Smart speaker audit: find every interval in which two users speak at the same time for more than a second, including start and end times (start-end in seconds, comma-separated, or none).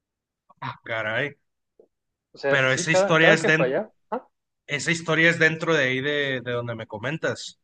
2.5-3.8